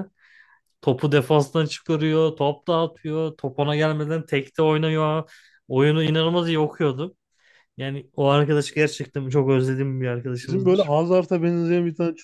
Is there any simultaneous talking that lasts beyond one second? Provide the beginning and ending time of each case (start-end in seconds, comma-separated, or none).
none